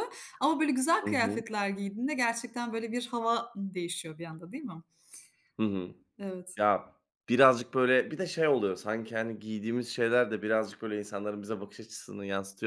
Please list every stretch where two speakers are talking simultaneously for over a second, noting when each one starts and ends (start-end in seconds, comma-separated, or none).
none